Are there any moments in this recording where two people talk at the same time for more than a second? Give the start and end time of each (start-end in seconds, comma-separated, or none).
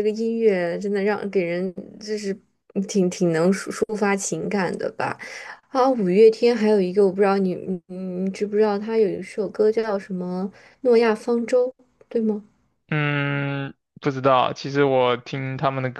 none